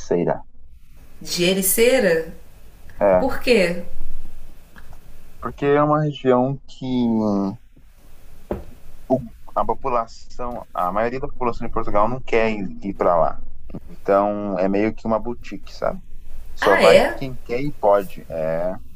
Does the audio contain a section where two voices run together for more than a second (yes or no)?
no